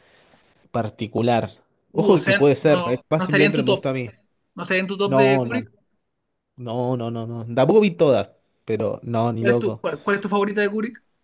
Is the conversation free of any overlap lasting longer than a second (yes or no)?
no